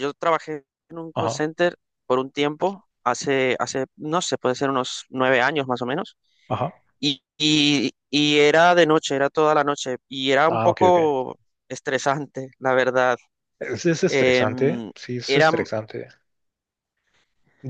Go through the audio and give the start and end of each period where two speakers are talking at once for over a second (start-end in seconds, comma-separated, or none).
14.1-15.5